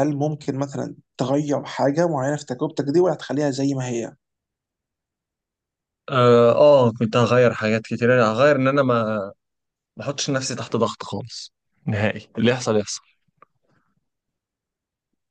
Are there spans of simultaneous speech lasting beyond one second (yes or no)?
no